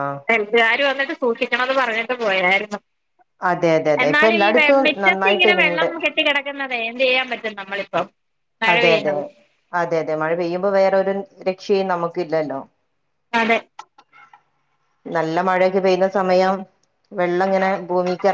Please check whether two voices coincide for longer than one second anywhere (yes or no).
yes